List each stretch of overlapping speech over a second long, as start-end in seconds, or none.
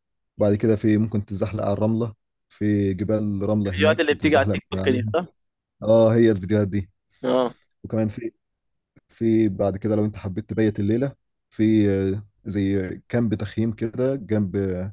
3.7-5.0